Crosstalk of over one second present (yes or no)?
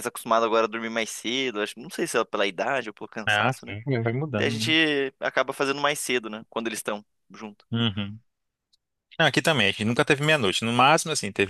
no